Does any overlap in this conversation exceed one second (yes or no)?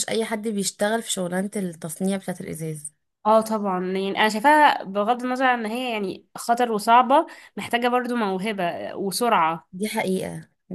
no